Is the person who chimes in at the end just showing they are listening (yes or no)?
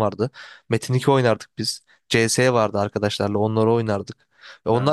yes